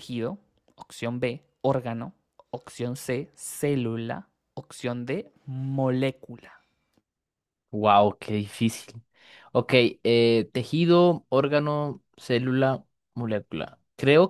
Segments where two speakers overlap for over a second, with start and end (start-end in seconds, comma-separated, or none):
none